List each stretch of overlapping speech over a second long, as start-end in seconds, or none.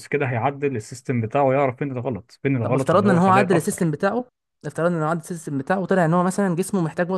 2.6-3.9